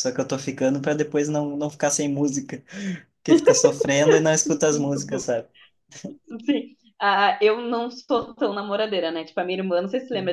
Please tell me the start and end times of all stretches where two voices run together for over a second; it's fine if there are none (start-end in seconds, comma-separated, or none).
none